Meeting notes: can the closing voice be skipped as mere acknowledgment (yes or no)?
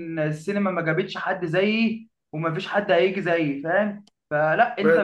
yes